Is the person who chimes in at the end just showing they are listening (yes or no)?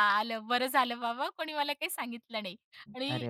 yes